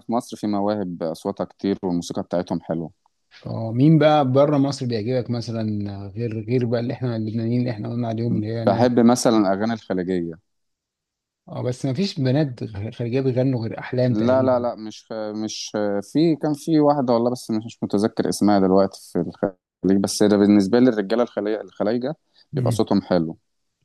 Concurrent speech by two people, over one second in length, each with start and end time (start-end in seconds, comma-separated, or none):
none